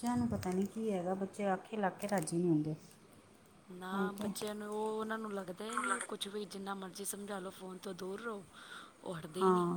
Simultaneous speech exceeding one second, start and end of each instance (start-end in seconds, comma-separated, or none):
none